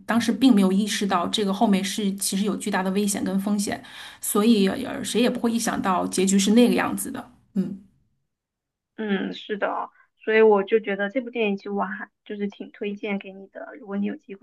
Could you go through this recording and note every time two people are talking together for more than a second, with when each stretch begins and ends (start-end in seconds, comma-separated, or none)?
none